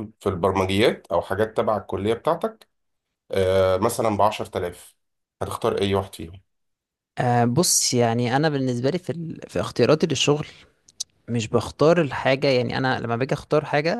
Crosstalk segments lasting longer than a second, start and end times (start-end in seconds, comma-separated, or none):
none